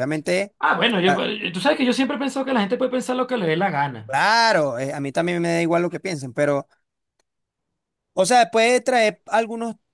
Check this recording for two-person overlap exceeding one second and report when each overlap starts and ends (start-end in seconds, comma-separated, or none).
none